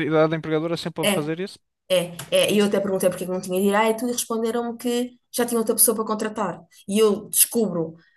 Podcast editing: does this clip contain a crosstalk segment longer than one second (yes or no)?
no